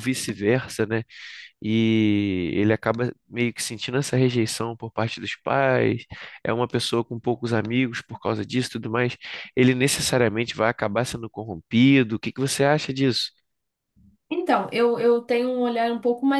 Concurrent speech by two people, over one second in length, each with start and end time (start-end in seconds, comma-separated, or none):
none